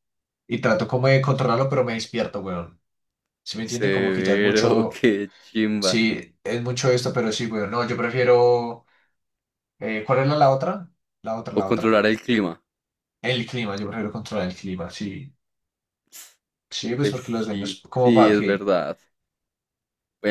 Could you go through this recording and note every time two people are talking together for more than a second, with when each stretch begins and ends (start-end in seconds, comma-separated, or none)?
3.6-5.0, 17.0-18.7